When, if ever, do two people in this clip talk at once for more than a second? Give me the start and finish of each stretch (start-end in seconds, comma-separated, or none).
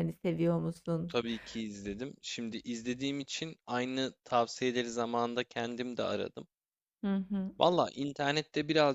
none